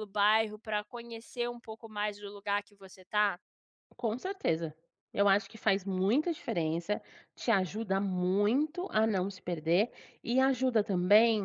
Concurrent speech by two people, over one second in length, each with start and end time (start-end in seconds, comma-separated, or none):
none